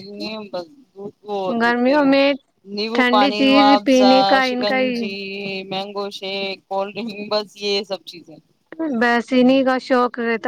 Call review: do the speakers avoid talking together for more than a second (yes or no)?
no